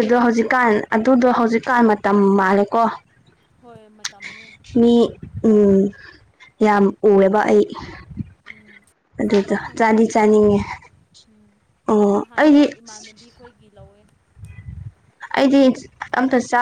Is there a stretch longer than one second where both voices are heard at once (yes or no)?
yes